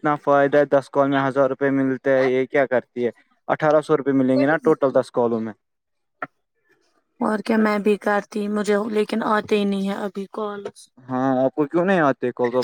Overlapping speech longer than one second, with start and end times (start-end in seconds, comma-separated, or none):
none